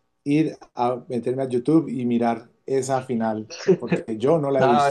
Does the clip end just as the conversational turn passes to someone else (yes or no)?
yes